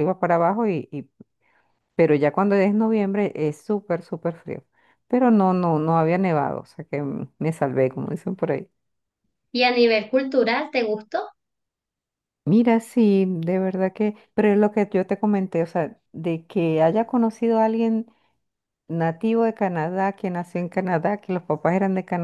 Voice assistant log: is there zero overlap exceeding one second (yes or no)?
yes